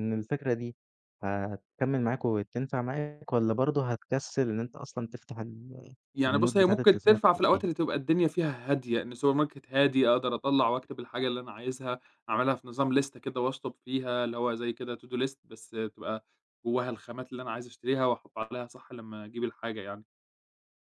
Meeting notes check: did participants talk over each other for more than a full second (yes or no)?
yes